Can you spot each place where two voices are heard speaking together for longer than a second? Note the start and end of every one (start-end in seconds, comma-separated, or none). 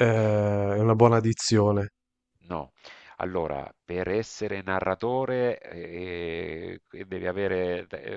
none